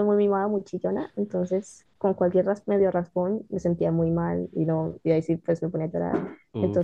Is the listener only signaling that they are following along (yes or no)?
yes